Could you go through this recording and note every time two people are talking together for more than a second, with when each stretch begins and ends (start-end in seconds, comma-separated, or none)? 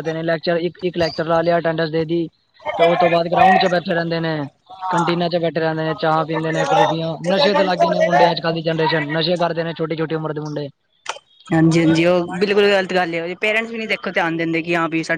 none